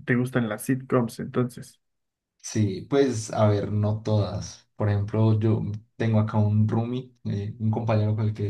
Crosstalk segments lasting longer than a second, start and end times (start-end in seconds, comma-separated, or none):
none